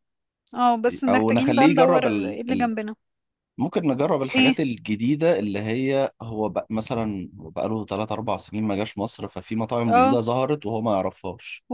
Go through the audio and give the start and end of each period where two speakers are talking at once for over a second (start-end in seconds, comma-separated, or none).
1.1-2.7